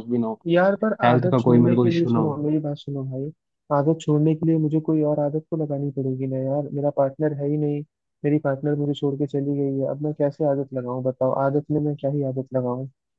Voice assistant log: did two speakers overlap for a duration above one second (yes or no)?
yes